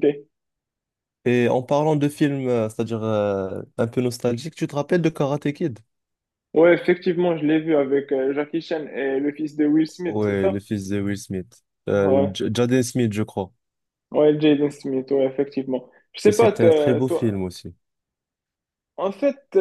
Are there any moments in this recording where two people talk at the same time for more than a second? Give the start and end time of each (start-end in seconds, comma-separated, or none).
16.2-17.5